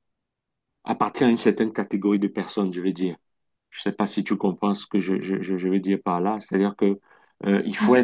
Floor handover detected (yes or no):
no